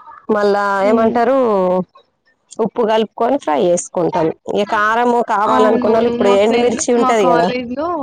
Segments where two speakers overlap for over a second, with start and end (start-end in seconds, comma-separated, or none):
5.5-7.5